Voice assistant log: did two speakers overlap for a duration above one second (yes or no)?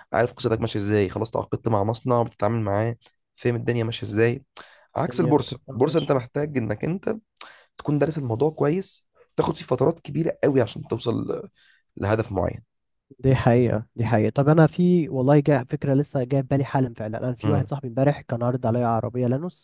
yes